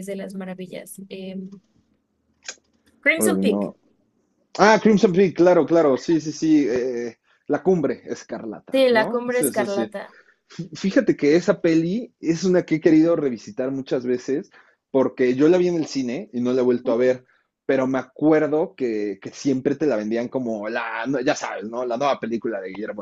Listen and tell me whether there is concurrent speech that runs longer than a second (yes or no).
yes